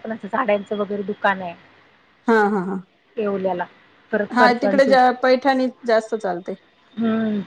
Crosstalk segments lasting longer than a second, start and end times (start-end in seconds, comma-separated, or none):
none